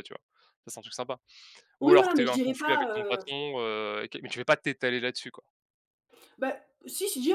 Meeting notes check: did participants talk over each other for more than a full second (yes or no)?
yes